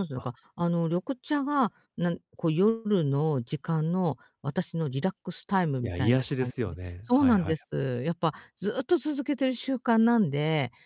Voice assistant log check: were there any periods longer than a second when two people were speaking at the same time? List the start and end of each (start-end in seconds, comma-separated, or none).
5.8-7.6